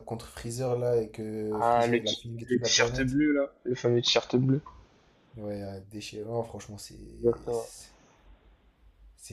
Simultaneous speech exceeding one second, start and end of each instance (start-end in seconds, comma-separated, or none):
1.5-3.2